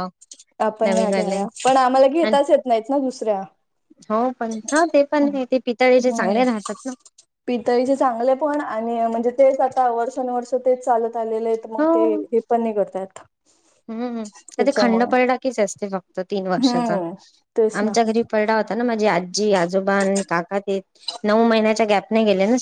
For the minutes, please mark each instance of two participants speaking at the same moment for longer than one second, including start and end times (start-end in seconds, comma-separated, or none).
none